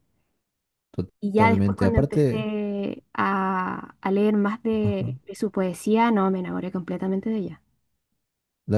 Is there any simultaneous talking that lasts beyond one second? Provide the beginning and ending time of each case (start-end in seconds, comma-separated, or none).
1.2-2.5